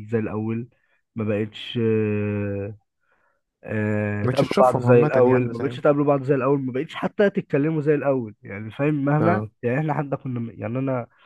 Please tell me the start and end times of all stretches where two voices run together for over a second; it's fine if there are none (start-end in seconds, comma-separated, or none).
4.2-5.8